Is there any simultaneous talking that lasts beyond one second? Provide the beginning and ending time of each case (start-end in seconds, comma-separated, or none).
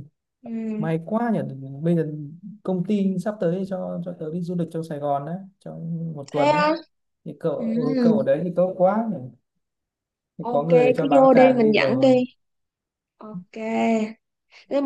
10.4-12.2